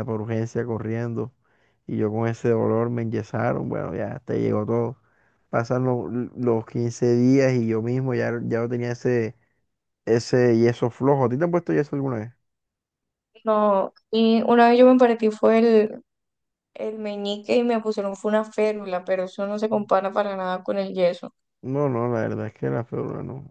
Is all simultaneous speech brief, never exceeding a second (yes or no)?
yes